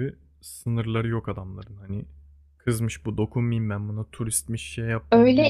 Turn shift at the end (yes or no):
yes